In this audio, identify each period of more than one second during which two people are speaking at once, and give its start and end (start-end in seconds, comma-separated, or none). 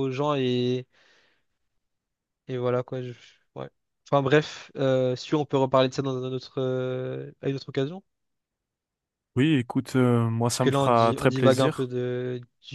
10.5-11.9